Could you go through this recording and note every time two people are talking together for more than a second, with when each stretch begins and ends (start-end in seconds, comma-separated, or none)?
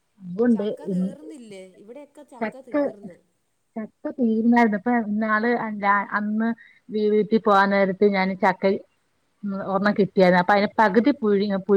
none